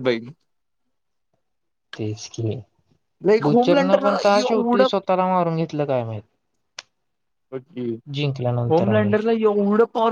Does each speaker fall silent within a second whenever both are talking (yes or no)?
no